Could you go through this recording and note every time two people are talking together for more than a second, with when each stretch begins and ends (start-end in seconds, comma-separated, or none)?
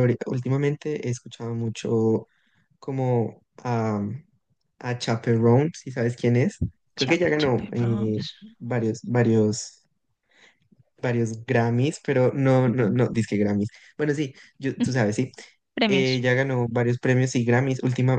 7.0-8.2